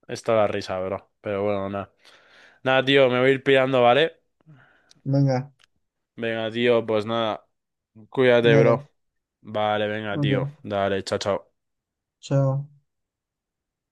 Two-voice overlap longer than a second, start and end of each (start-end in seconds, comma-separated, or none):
none